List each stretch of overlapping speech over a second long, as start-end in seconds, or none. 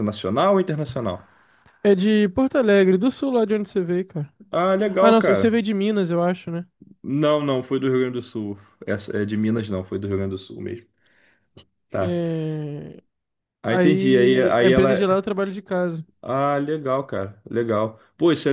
13.7-15.1